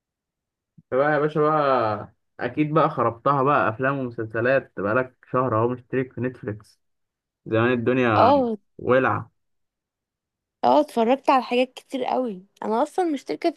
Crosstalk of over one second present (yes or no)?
no